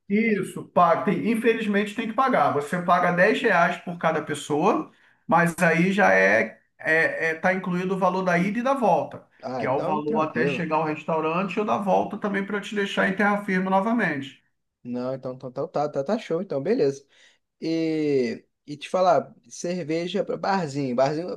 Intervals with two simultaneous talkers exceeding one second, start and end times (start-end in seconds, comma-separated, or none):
9.4-10.7